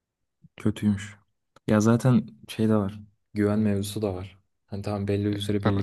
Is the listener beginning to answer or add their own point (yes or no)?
no